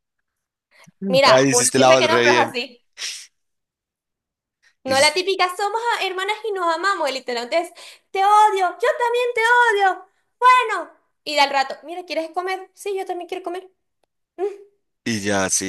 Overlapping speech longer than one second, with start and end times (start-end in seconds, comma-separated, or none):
1.2-2.6